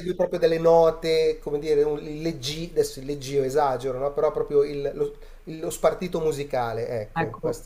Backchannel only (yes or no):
no